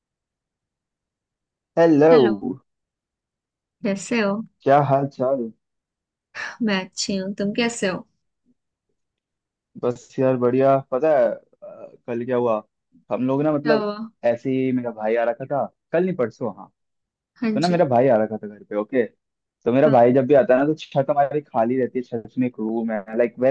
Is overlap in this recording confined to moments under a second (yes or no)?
yes